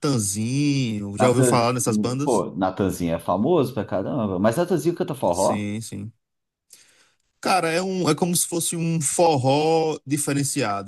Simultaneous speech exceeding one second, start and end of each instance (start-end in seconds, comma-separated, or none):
1.2-2.4